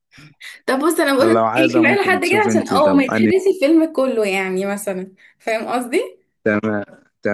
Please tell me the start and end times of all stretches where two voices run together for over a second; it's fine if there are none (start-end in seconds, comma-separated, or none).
1.2-3.3